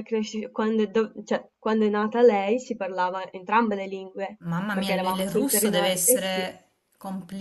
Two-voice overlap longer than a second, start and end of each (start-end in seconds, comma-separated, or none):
4.4-6.5